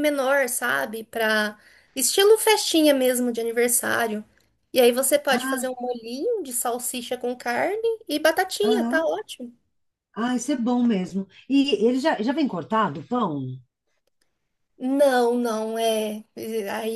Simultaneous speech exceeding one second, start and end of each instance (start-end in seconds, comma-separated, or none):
none